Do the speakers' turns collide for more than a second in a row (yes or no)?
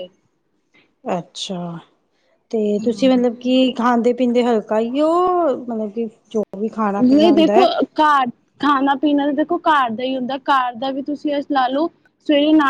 no